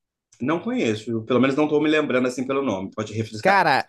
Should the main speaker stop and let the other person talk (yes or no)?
yes